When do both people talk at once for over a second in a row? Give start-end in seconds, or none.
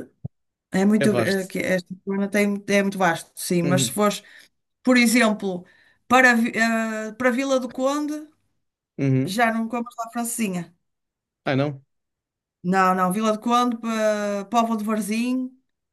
none